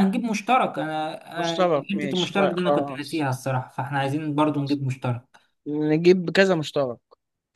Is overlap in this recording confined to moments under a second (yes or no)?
no